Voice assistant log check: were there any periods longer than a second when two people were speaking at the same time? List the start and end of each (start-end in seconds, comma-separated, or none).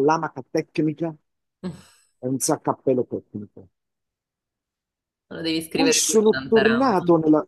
5.7-7.0